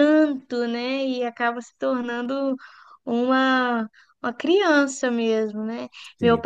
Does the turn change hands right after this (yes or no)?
no